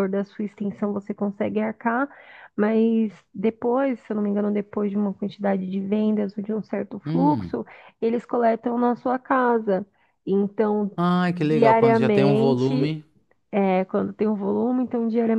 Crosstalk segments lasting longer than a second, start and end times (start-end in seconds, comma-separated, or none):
11.5-12.9